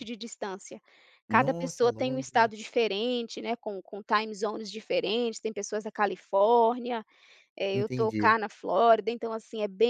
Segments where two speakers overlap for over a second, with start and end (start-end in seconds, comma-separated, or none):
1.3-2.5